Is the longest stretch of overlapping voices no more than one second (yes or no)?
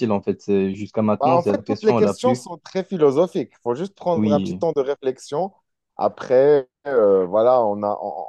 no